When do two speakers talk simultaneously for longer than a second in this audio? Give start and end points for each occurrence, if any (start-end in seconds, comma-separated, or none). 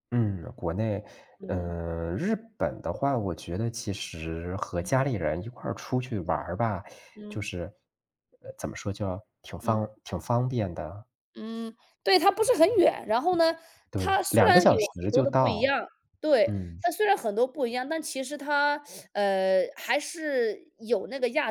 13.9-15.8